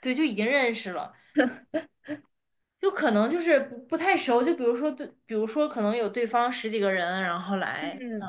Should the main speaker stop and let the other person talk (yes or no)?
no